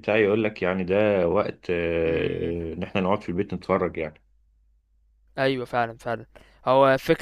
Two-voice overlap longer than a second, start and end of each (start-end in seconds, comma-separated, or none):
none